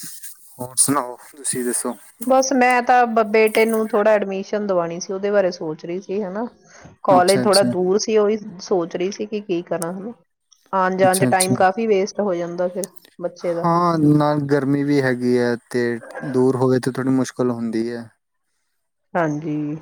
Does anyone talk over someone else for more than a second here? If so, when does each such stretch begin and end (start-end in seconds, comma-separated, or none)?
none